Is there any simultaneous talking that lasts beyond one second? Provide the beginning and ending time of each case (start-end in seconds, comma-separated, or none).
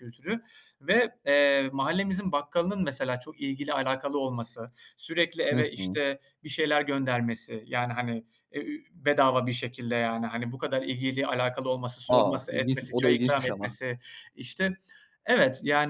12.1-13.8